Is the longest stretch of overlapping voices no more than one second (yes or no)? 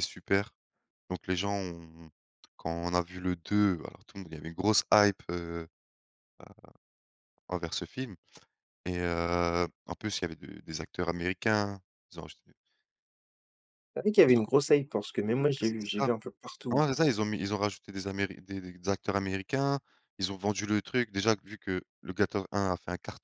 yes